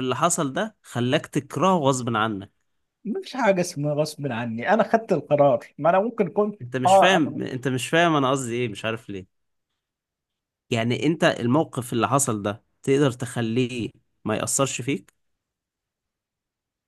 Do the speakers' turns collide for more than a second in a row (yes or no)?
no